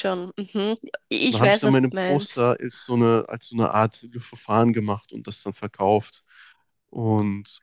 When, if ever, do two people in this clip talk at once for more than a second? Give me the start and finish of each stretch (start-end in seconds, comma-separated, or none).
1.3-2.5